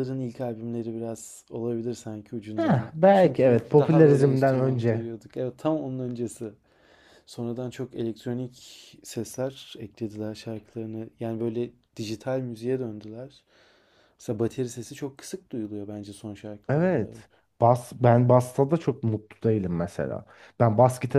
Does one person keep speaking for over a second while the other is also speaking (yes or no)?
yes